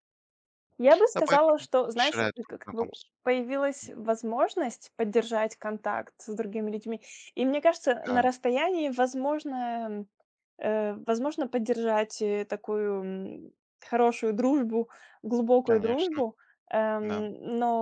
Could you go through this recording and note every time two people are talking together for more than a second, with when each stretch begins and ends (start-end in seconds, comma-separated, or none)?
1.1-3.1